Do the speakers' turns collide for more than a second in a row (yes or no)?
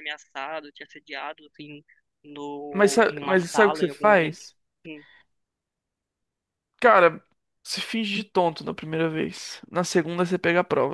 yes